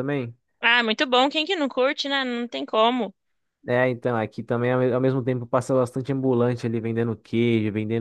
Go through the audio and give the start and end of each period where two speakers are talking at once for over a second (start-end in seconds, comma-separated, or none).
none